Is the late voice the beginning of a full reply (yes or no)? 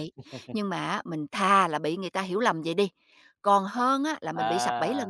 no